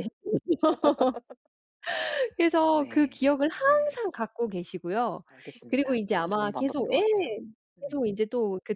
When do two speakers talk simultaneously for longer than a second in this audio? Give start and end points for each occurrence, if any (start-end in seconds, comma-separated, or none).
2.6-4.0, 5.7-7.0